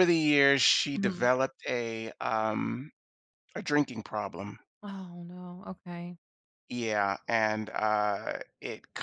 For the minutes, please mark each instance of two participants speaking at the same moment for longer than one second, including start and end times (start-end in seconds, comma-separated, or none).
none